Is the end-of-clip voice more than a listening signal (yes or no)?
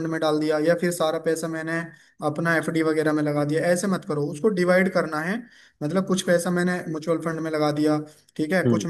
no